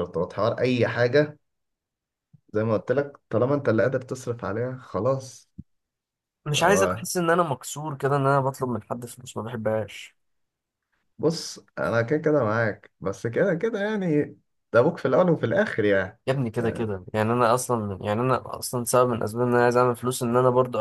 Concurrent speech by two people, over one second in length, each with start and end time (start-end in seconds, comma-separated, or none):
none